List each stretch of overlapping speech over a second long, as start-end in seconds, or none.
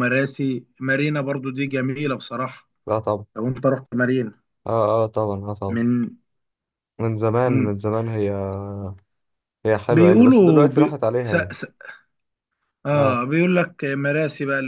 9.9-11.6